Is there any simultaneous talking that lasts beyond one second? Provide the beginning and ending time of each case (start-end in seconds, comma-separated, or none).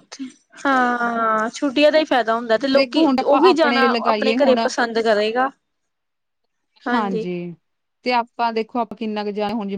2.8-4.6